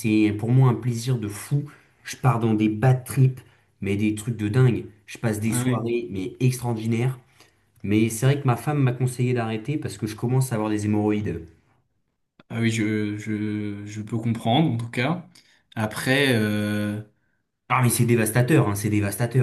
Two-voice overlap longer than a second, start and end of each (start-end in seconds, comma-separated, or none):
none